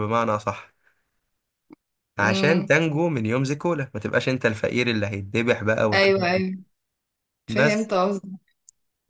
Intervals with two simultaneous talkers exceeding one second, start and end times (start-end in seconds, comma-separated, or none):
none